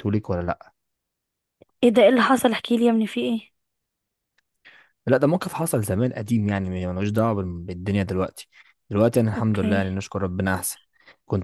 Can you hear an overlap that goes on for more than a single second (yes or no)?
no